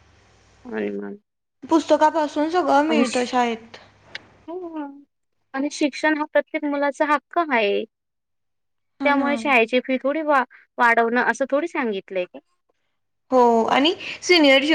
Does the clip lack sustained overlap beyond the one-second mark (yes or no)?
yes